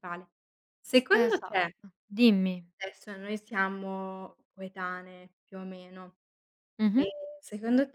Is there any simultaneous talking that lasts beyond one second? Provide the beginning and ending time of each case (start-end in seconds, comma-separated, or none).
none